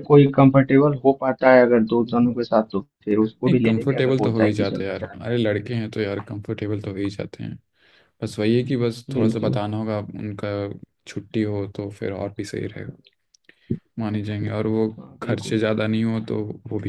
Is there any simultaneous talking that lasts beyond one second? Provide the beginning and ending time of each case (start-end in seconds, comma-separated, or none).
3.6-5.8